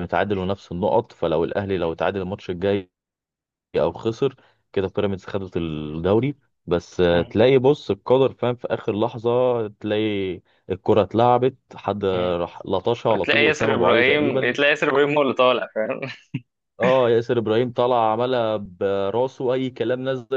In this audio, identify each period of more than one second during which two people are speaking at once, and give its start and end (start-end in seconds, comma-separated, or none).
13.2-14.6